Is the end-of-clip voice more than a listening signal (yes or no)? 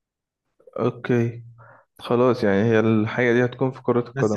yes